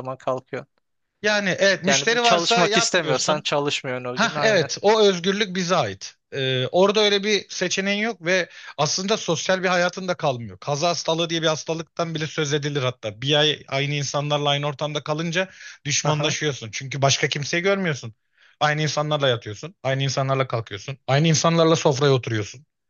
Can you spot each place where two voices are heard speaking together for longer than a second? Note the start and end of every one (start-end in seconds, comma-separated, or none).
1.9-3.5